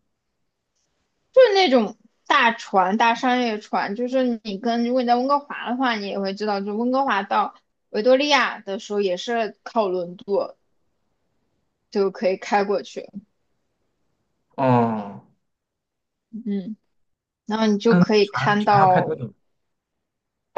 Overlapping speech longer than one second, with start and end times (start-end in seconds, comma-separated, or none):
17.9-19.2